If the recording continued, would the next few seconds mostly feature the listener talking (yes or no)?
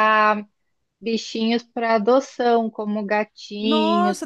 yes